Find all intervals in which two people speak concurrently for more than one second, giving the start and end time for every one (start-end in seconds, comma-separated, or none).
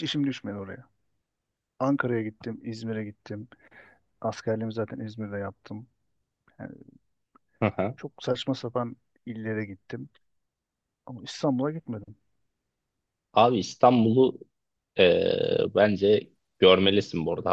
none